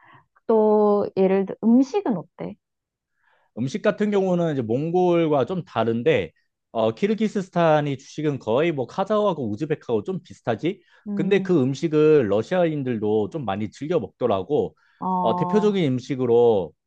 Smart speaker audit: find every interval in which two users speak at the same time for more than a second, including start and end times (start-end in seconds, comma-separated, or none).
none